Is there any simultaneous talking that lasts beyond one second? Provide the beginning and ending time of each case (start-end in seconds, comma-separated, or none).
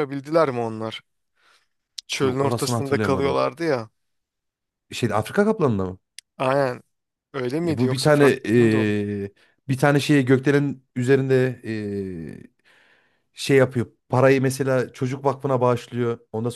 2.2-3.4, 7.7-9.0